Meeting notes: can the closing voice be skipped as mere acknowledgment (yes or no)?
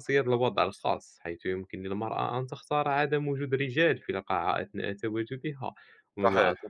yes